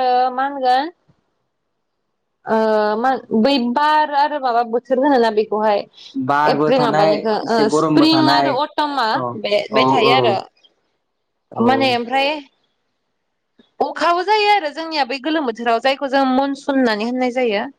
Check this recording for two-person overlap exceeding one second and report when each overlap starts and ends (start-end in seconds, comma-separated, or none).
6.5-8.5